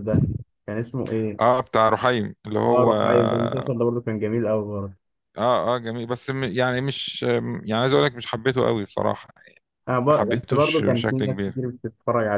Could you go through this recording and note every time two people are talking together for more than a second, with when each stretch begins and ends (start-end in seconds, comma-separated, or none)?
10.1-11.6